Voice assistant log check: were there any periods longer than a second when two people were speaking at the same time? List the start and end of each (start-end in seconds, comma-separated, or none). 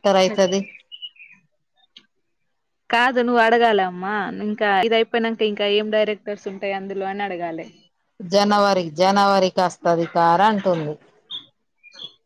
none